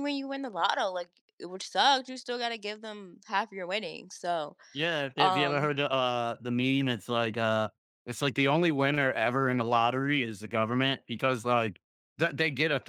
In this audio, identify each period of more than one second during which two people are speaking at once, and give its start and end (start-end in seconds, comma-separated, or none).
none